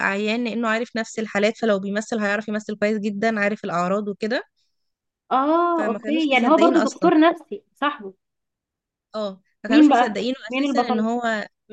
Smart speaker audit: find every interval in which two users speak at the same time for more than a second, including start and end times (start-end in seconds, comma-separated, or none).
5.8-7.1, 9.7-11.1